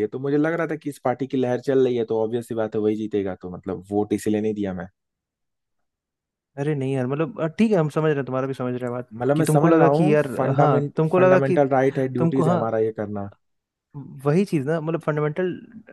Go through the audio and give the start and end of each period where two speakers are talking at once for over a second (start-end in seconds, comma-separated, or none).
9.1-11.6